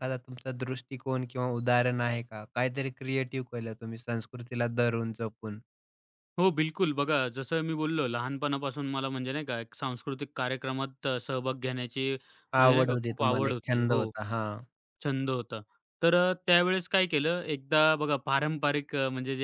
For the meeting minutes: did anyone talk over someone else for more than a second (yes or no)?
yes